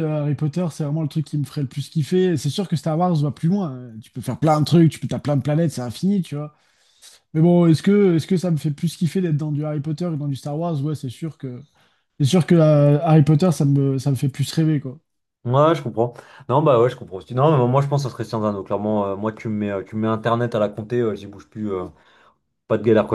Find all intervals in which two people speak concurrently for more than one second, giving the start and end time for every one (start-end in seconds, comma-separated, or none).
none